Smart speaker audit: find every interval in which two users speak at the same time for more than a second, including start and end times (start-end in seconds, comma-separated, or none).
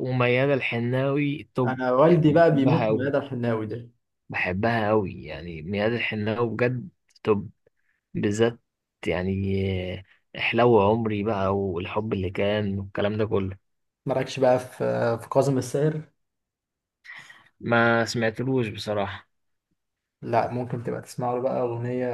1.6-3.1